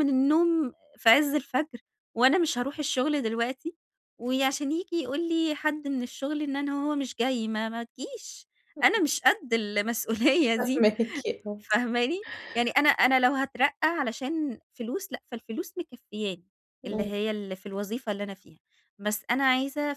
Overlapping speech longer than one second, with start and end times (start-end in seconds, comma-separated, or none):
none